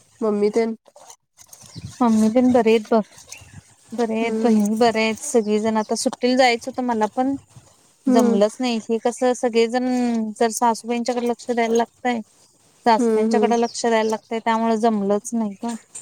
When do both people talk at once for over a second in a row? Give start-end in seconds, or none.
none